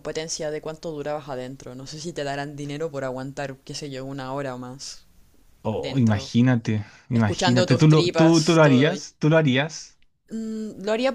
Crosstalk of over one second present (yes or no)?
yes